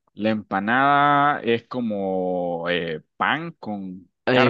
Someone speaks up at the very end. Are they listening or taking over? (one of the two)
taking over